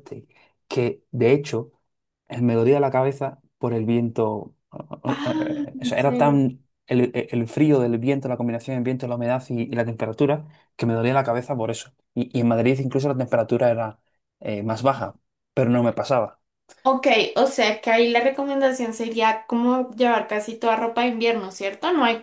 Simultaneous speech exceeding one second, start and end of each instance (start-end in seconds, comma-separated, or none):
5.1-6.4